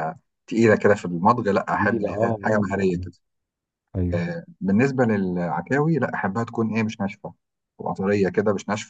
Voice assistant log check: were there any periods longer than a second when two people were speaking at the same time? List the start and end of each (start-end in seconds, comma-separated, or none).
1.7-3.0